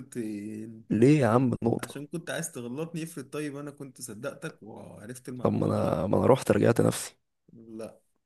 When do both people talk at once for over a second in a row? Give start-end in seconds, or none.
none